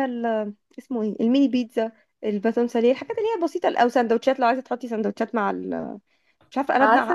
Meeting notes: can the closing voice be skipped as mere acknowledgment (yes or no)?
no